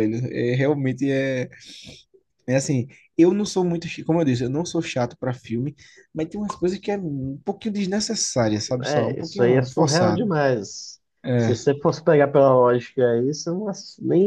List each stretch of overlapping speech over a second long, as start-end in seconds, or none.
8.8-10.3